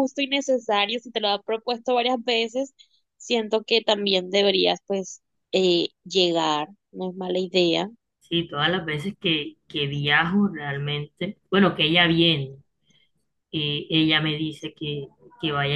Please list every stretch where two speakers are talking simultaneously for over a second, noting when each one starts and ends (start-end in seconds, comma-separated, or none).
none